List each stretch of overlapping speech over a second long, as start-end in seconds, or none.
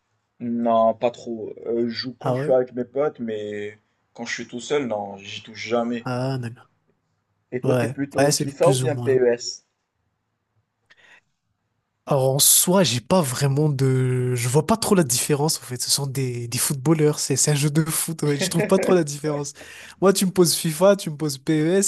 7.6-9.2